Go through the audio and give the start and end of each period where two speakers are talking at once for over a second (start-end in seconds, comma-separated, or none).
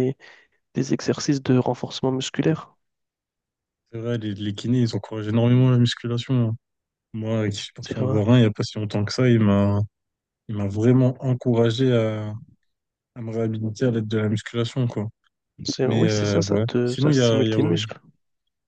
15.8-17.6